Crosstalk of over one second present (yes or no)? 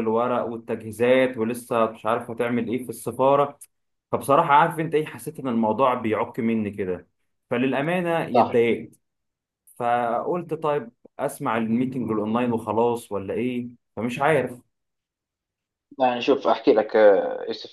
no